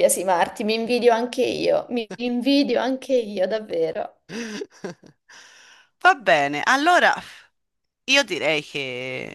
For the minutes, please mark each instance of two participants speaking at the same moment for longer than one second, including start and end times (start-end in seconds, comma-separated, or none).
none